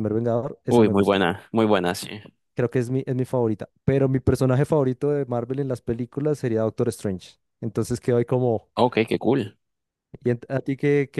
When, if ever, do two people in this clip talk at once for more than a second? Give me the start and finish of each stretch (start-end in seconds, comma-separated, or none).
none